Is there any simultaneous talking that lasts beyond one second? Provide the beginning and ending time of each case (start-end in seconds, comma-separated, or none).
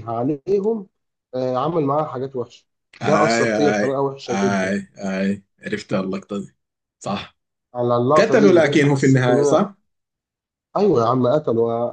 3.0-4.7, 8.2-9.7